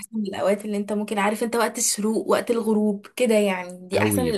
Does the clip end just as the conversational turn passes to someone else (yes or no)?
yes